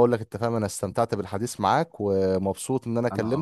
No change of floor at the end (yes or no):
yes